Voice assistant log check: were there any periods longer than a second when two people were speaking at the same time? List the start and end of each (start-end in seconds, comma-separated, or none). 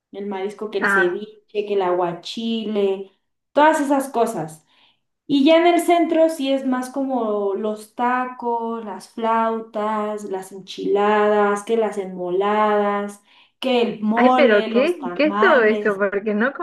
14.1-16.0